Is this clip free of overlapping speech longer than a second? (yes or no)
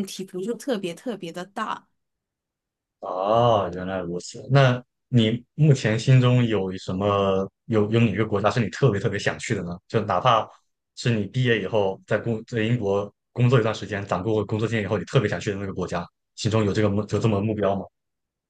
yes